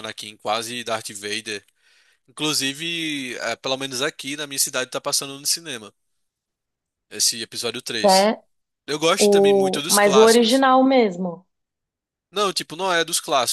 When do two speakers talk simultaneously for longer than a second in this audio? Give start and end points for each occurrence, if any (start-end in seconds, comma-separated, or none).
9.2-10.7